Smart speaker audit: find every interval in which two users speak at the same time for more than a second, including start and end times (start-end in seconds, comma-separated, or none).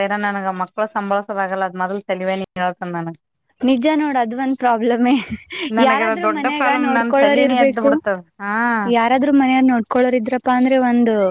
5.9-7.9